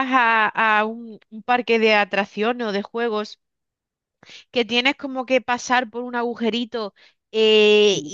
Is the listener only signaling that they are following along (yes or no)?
yes